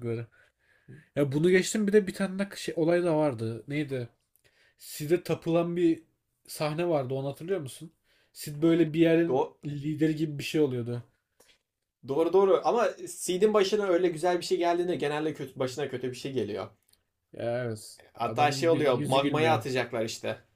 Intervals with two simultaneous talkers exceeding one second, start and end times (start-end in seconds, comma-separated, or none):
18.1-19.6